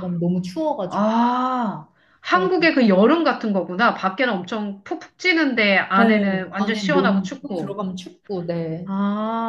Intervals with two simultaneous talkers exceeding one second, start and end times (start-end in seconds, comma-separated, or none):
6.0-7.8